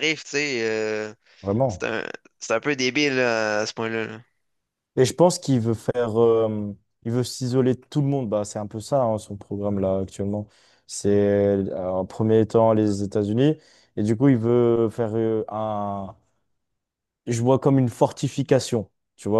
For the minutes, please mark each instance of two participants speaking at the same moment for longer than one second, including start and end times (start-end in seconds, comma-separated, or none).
none